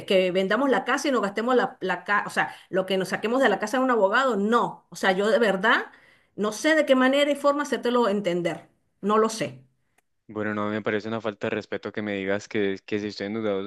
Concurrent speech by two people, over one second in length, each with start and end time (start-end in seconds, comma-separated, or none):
none